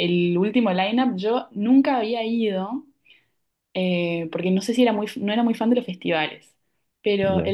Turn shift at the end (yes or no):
no